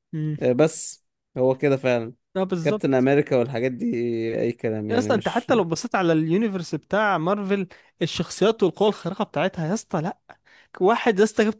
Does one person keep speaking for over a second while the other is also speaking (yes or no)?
no